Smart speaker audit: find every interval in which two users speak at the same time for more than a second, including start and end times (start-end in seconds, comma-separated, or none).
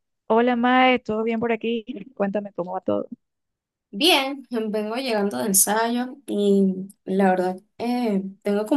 none